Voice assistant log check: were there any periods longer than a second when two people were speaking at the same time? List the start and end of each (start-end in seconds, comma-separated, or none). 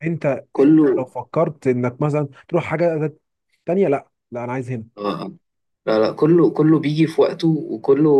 none